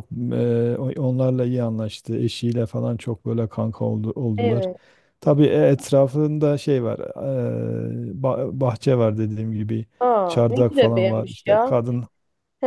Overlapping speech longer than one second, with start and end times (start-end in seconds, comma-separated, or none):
10.2-11.7